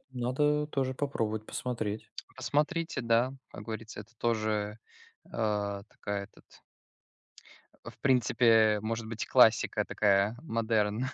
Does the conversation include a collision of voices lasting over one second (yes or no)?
no